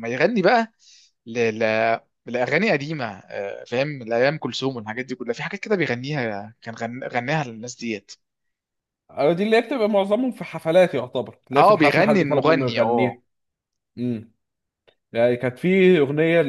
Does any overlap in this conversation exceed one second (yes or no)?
yes